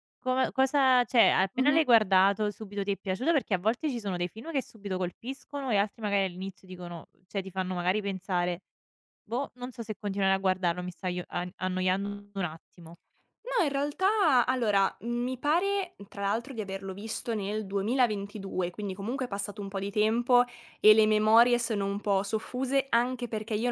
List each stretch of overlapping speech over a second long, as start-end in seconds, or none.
none